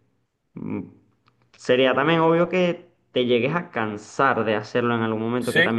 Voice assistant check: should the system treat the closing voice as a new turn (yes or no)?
no